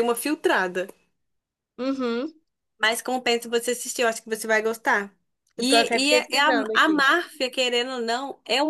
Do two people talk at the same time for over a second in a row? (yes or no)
yes